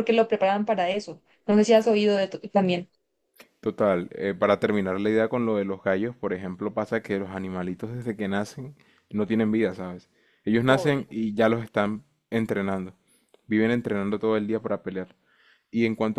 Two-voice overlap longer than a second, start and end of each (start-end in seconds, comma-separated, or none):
none